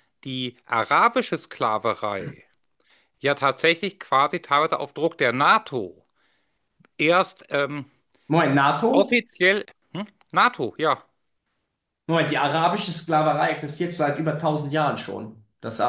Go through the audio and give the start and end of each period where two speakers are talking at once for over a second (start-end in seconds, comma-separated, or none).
none